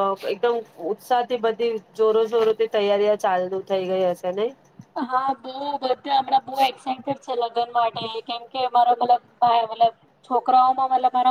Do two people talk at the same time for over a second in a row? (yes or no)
no